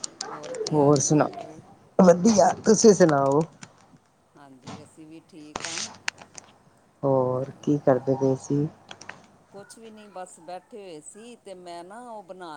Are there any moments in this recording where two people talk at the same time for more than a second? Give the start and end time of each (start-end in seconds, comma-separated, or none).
none